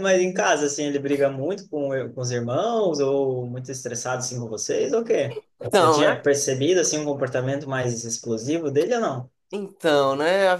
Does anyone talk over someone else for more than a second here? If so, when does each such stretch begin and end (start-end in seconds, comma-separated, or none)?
none